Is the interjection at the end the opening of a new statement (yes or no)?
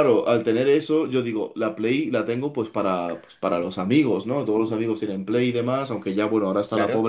no